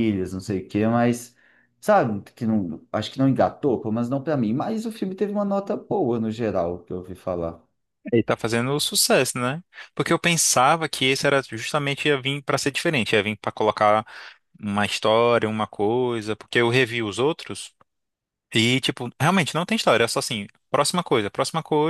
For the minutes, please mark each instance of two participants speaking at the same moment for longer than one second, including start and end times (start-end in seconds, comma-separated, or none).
none